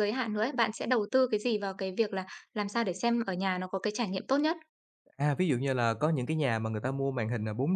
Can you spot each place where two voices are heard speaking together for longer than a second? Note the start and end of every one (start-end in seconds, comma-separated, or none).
none